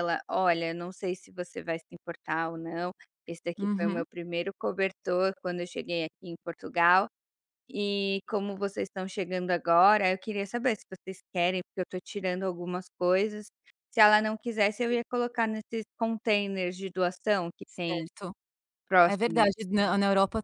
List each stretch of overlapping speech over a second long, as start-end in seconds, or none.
none